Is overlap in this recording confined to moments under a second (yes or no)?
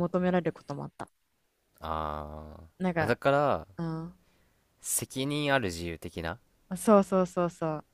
yes